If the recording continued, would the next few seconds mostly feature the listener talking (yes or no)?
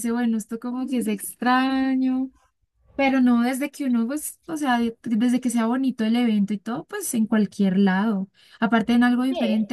no